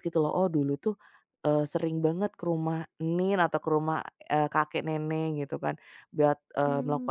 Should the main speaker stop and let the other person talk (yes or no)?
no